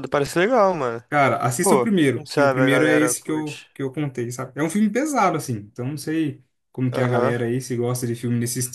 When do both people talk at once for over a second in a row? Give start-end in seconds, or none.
1.6-3.7